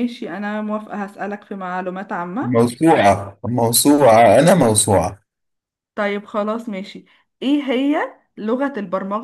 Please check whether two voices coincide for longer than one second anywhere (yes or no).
no